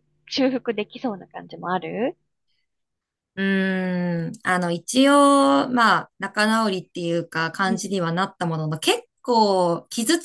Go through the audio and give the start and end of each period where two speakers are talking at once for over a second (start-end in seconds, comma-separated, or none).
none